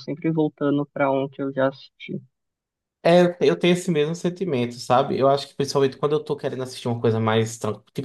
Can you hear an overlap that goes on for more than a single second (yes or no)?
no